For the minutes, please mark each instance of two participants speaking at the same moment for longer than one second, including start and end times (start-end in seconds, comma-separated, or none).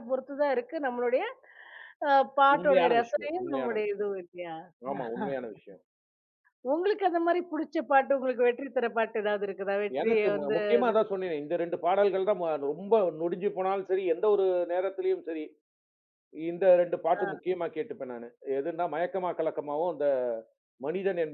2.5-4.1